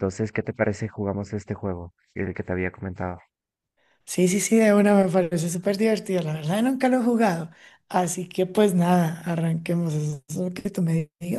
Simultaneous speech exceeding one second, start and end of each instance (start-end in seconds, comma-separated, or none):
none